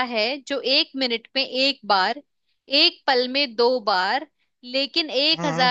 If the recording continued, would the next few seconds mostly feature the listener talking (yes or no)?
no